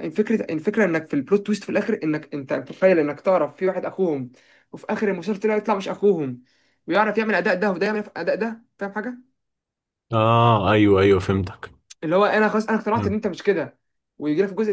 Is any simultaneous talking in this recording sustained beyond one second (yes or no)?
no